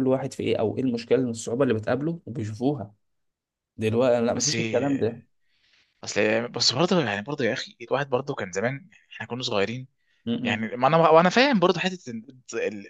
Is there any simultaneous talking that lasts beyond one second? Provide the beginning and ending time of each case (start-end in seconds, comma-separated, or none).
none